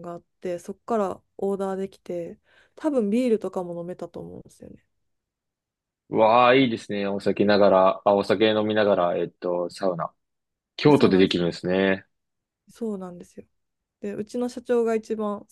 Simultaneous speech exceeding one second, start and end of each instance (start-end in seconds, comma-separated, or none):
none